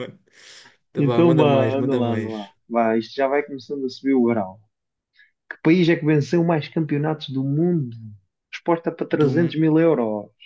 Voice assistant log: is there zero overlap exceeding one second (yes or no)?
no